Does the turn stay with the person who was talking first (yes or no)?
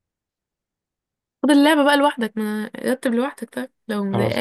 no